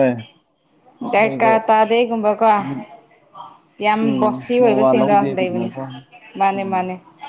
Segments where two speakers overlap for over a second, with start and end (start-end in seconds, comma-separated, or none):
4.0-5.7